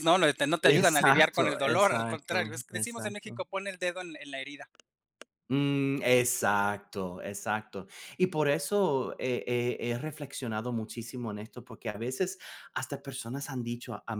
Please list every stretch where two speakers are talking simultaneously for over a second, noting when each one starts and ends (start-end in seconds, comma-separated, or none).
0.6-3.4